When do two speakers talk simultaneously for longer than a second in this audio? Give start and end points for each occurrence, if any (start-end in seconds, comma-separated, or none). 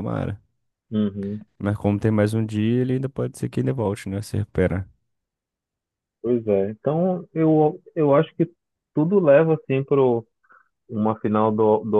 none